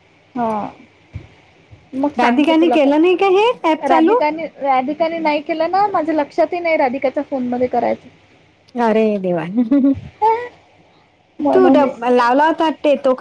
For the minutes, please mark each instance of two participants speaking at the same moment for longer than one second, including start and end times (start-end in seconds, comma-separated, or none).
2.2-4.2